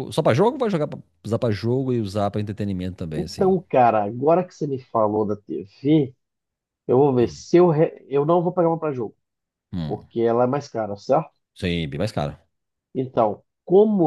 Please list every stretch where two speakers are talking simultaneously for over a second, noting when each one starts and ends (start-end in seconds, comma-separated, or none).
none